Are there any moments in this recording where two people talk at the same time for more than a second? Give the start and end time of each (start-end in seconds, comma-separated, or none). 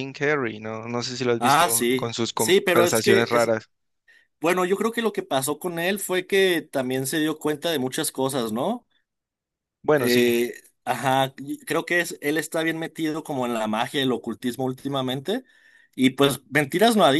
1.4-3.5